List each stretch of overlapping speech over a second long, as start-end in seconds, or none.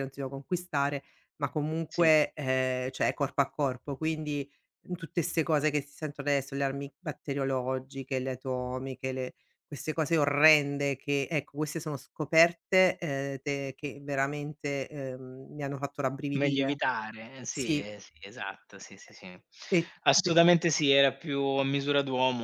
none